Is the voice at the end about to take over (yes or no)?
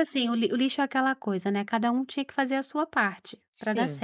no